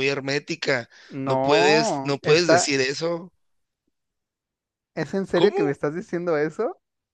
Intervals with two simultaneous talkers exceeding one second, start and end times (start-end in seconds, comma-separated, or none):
1.3-2.7